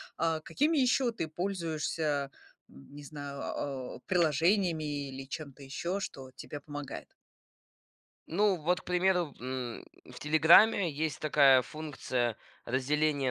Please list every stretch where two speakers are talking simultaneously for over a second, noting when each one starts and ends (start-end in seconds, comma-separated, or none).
none